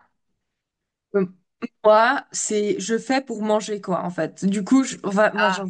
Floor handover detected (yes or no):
no